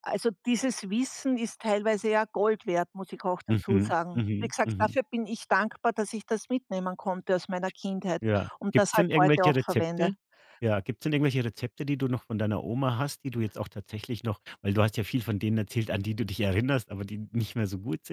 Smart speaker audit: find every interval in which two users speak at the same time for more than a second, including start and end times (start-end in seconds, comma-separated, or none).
3.5-5.0, 8.6-10.1